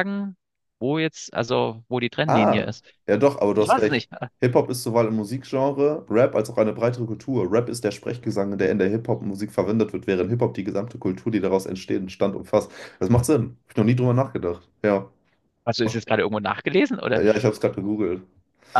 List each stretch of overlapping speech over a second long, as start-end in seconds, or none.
none